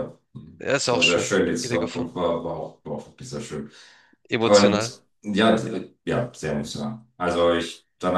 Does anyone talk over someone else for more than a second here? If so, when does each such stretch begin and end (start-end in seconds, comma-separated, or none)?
0.7-2.2